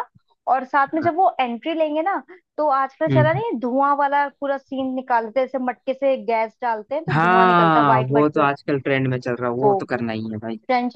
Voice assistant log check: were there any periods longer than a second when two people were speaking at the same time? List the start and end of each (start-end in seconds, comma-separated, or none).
7.1-8.5